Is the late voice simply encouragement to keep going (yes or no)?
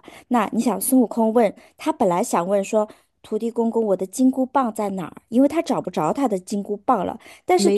yes